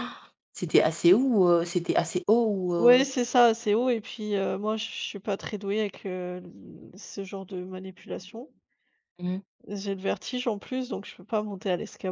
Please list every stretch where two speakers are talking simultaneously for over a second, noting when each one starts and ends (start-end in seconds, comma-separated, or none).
none